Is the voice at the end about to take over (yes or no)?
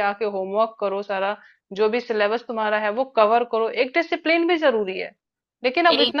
no